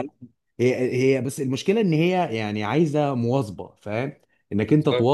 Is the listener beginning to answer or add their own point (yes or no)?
no